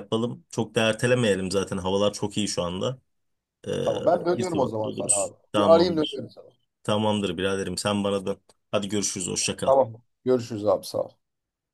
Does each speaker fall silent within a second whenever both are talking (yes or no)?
no